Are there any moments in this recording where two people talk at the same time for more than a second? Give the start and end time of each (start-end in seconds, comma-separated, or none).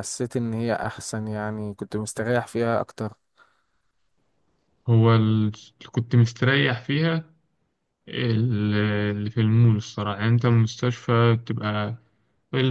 none